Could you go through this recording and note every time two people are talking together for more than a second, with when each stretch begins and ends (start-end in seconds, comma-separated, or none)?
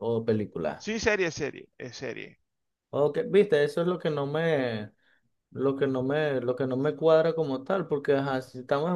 none